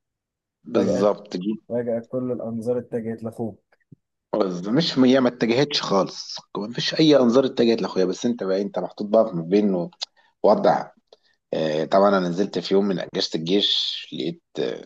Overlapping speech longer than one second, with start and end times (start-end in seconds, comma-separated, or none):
none